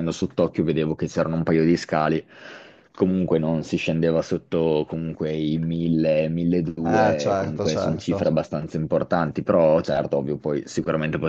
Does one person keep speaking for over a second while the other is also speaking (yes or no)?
yes